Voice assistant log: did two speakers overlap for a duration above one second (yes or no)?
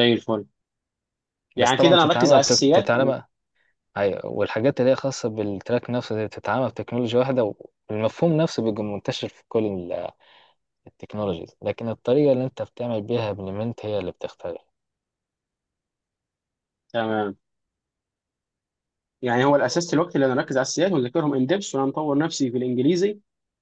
yes